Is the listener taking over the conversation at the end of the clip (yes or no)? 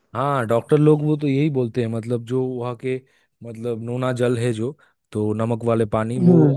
no